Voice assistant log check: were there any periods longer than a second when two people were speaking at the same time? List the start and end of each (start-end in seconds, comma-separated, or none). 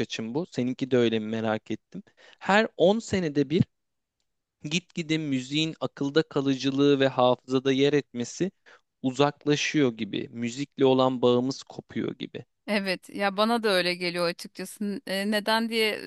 none